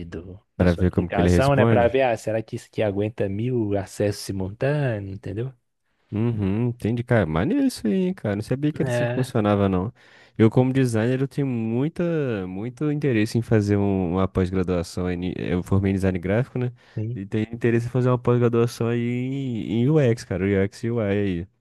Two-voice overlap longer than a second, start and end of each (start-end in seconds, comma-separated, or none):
0.6-2.0